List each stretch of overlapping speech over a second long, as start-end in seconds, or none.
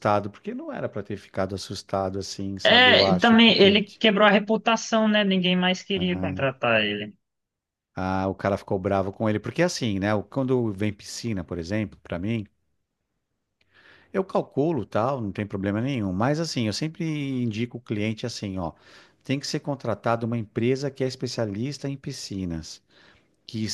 2.6-4.0